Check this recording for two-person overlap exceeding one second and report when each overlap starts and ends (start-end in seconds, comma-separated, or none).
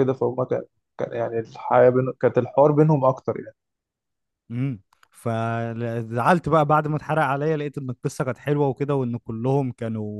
none